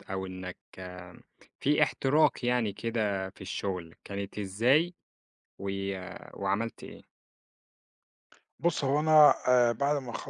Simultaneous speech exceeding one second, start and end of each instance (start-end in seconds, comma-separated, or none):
none